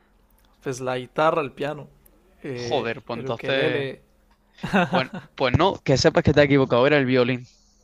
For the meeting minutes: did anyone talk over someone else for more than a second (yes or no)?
yes